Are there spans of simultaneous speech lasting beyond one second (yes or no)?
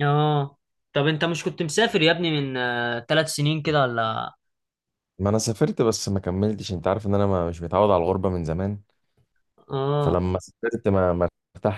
no